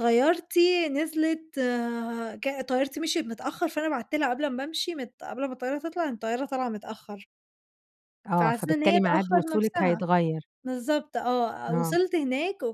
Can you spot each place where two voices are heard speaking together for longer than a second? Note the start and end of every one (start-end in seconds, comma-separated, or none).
8.4-10.0